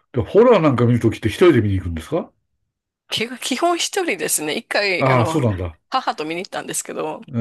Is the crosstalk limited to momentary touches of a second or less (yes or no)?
yes